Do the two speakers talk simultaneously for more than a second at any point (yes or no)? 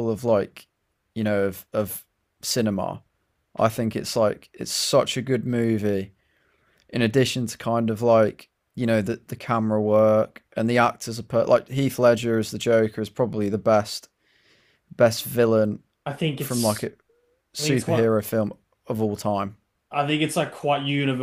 no